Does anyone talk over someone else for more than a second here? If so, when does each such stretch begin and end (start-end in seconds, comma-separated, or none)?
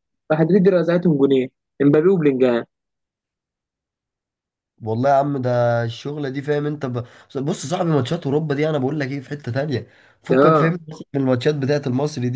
none